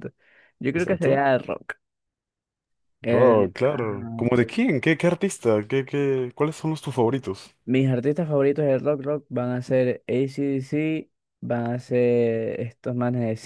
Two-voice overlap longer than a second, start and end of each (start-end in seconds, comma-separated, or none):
3.1-4.6